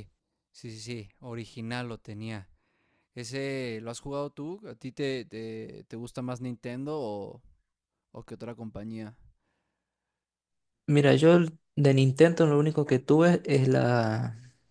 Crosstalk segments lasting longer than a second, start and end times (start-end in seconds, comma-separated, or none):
none